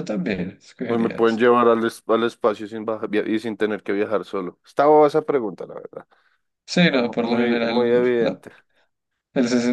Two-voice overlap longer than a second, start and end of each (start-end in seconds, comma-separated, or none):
6.8-8.4